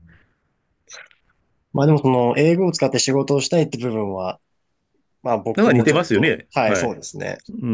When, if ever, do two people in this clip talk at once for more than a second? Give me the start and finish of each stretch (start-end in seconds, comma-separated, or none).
5.5-6.9